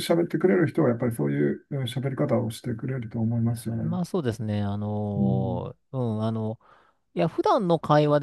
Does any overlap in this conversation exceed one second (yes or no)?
no